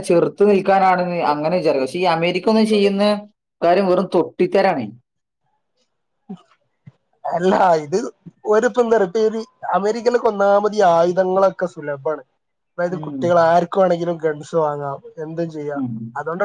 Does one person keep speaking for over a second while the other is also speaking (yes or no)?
no